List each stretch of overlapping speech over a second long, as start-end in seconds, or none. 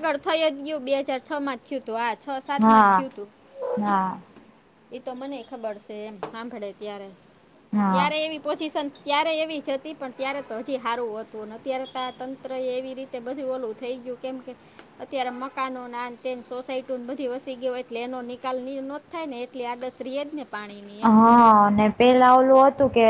none